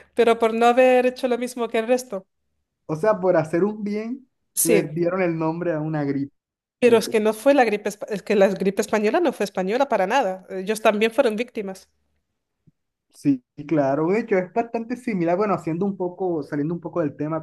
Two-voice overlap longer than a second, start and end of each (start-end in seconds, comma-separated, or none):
none